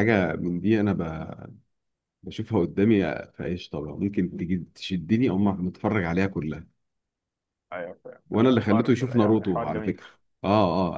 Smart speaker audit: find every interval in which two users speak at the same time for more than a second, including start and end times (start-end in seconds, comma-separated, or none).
8.6-10.0